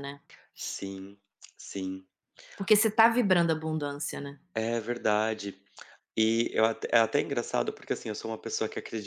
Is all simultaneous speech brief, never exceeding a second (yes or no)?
yes